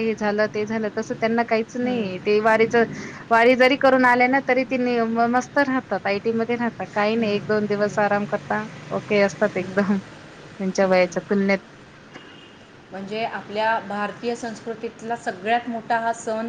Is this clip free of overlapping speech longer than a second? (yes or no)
yes